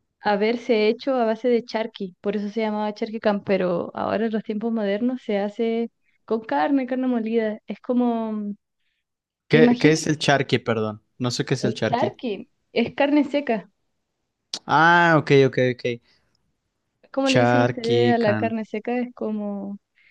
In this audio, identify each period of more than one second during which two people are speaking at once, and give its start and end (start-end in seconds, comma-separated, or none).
17.3-18.5